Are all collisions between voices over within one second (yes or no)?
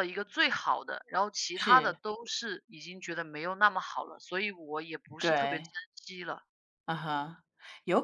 yes